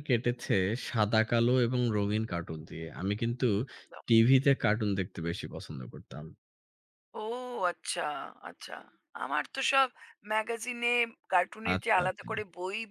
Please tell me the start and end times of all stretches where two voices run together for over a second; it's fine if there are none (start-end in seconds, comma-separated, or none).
none